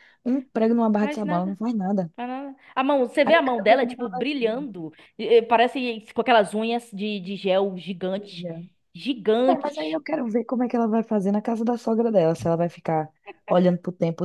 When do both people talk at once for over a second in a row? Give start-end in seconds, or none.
3.2-4.7